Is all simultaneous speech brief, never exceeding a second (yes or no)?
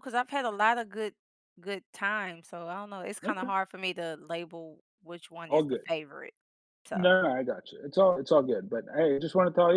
yes